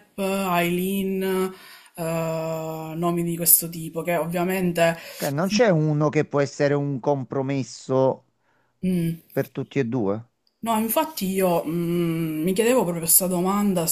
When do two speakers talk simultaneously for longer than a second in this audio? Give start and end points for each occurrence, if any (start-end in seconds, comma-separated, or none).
none